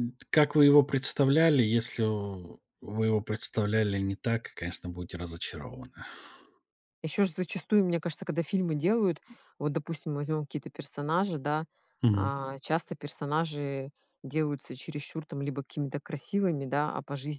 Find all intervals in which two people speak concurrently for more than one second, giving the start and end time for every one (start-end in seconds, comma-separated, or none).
none